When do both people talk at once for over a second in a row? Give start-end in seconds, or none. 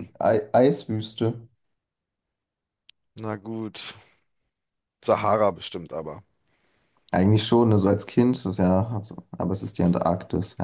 none